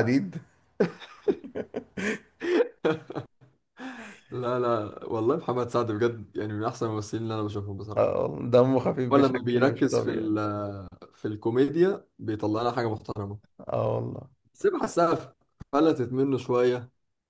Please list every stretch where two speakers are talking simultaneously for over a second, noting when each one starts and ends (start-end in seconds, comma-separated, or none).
9.1-10.4